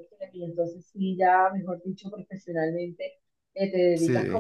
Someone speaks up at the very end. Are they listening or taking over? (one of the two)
listening